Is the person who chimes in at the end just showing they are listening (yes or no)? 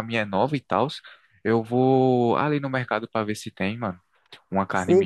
no